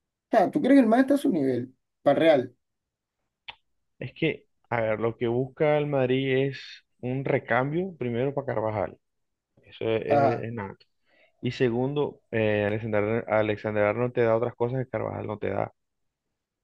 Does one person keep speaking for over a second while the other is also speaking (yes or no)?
no